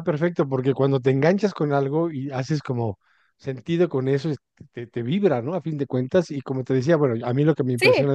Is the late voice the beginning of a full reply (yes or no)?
no